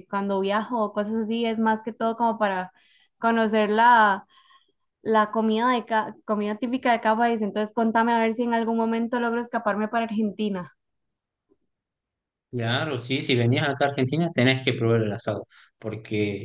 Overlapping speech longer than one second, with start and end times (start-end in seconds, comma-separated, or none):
none